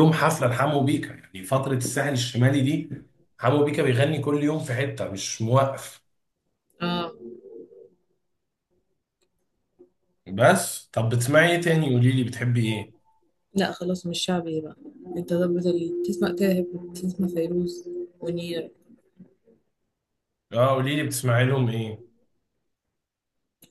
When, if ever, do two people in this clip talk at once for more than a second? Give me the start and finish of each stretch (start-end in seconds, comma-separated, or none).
none